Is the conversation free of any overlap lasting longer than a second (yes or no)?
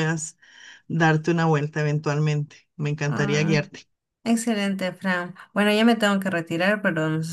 yes